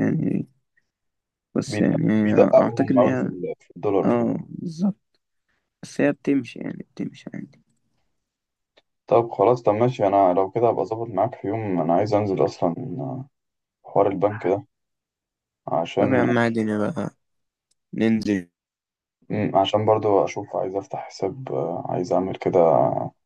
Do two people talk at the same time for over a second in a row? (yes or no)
yes